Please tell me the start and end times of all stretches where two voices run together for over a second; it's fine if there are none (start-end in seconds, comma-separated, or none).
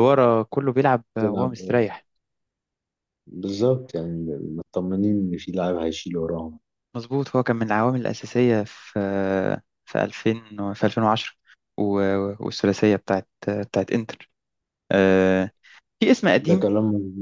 none